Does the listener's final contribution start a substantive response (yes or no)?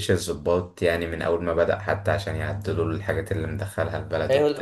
yes